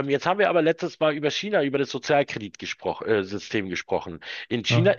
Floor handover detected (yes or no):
no